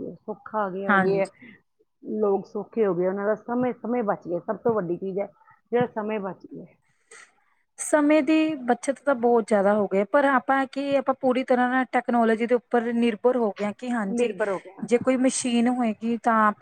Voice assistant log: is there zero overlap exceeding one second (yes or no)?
yes